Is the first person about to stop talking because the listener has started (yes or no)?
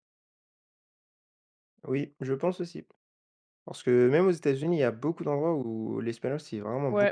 yes